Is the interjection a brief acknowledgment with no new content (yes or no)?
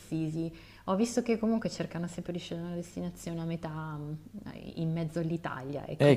no